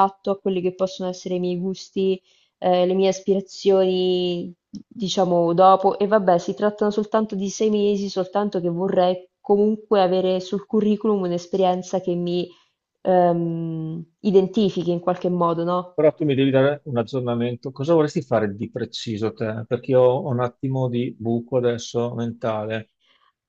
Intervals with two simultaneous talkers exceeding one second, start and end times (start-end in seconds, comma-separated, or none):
none